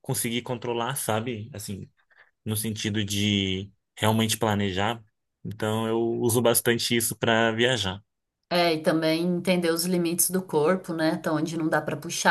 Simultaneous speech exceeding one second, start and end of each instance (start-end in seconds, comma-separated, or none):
none